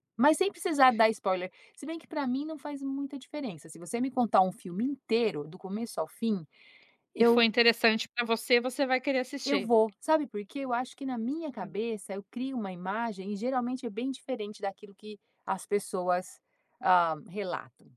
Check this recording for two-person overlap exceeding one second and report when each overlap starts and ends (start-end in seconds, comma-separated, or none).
none